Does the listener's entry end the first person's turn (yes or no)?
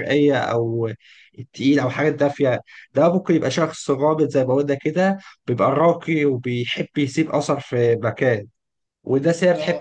no